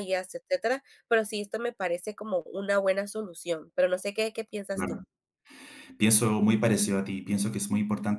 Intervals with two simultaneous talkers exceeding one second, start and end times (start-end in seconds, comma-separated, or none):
none